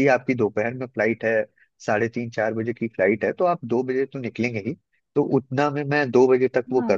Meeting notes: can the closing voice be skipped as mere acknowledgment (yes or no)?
yes